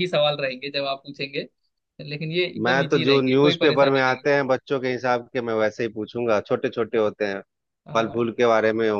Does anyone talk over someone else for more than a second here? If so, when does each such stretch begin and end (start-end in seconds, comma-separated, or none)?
2.6-4.3